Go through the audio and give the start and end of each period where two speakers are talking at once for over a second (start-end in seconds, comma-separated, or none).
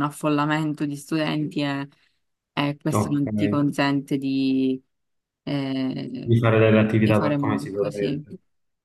7.0-8.2